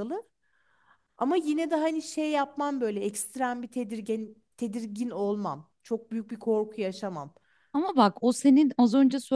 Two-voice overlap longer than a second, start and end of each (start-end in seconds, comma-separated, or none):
none